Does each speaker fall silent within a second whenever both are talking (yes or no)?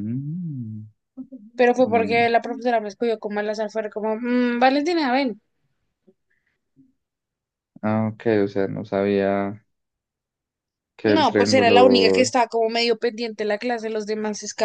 no